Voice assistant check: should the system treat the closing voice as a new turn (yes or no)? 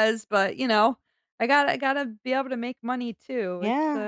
yes